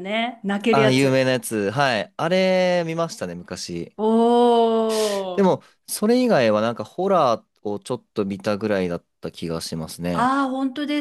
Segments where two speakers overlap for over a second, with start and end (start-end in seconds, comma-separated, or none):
none